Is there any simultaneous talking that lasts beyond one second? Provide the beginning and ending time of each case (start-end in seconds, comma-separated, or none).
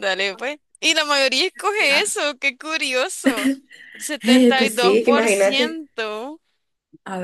4.2-5.8